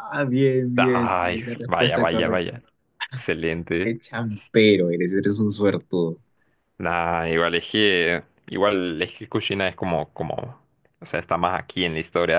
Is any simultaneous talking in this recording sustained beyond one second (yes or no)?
yes